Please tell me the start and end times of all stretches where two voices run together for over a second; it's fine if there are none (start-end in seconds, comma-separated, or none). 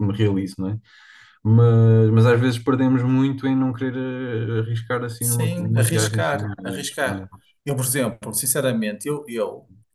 5.2-7.2